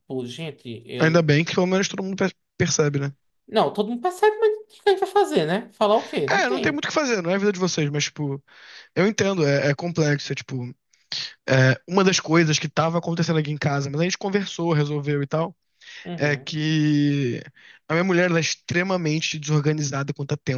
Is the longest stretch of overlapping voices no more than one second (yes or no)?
yes